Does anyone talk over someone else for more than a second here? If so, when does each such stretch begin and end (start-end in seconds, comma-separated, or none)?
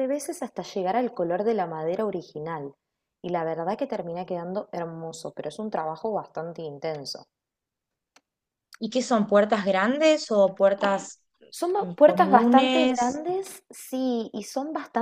11.8-13.2